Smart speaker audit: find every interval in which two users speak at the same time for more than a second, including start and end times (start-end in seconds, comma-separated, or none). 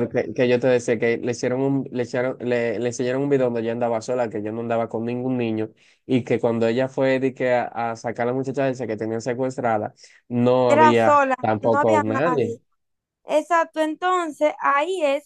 10.7-12.6